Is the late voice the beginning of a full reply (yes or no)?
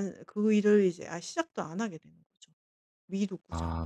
yes